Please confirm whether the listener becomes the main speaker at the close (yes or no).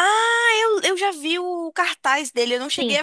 yes